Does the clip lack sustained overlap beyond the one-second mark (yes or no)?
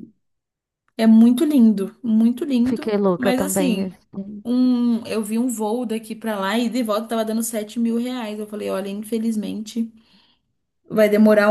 no